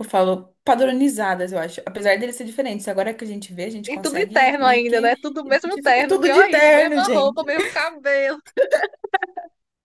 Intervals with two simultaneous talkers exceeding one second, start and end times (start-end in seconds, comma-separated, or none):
3.9-7.4